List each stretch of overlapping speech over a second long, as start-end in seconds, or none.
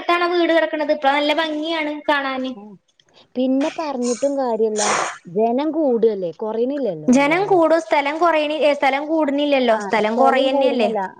none